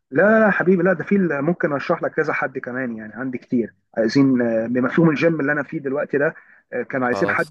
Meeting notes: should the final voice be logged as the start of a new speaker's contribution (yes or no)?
no